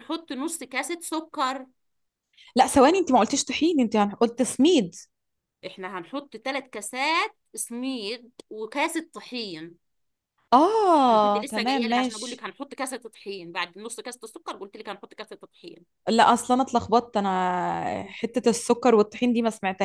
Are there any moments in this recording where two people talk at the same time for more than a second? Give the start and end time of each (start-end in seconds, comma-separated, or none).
11.1-12.4